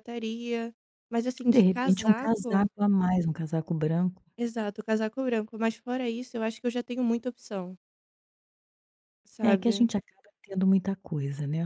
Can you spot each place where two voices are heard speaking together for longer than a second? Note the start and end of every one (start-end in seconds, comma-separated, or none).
1.4-2.7